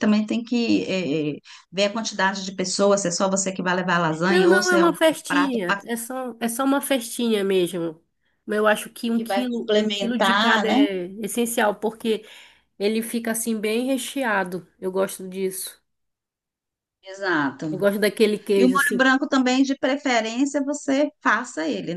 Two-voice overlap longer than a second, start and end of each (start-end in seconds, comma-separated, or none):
4.3-5.8, 9.1-10.8